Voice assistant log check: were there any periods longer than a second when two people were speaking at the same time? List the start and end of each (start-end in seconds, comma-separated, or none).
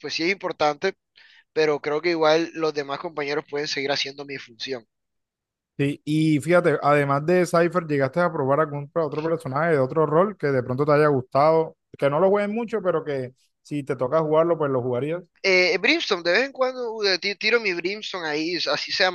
none